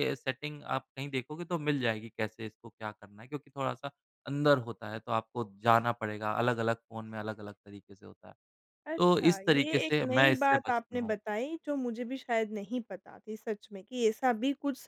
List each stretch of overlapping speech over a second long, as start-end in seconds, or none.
9.0-11.2